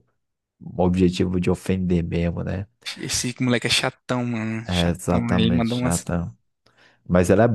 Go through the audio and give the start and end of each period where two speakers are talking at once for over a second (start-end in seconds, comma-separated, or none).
4.7-6.0